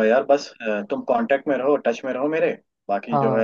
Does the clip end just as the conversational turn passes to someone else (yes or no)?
no